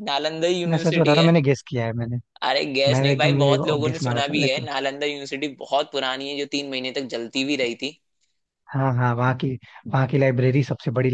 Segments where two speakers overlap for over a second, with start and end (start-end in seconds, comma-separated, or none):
2.9-4.7